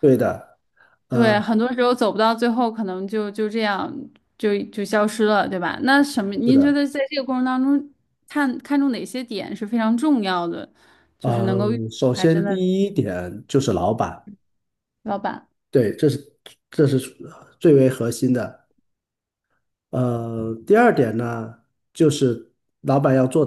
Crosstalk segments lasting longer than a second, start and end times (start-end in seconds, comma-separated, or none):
11.2-12.6